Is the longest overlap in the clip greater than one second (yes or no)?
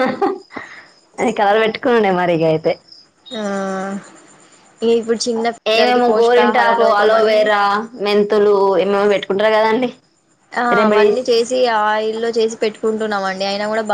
yes